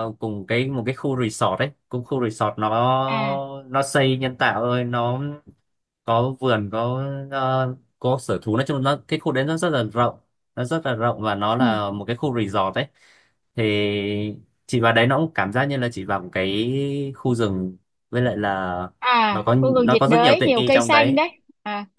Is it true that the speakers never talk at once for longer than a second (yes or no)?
no